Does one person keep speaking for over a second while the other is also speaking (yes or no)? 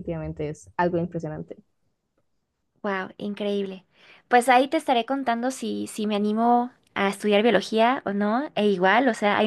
no